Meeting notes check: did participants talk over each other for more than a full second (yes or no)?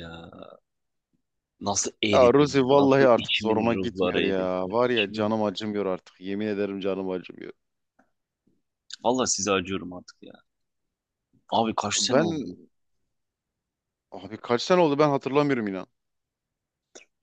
yes